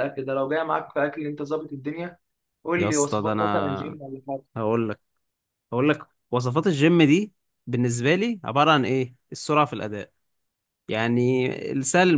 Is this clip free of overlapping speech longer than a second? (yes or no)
no